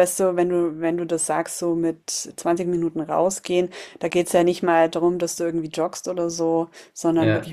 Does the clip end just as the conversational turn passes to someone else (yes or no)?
no